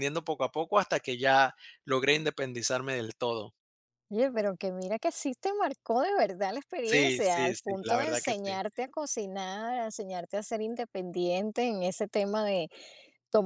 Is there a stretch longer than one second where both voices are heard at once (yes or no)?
yes